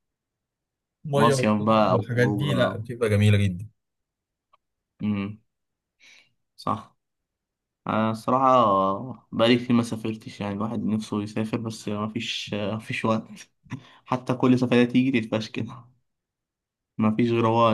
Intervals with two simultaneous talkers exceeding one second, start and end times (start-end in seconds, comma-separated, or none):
1.1-2.9